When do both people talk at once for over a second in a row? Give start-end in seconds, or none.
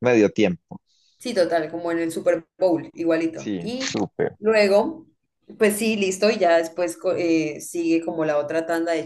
none